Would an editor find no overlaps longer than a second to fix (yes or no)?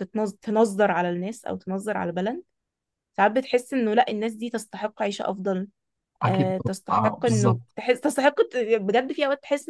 no